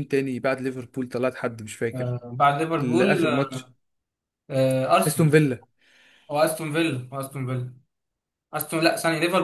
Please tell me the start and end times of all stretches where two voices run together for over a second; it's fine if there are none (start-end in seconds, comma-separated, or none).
none